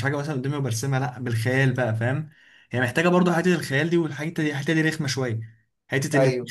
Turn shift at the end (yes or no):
no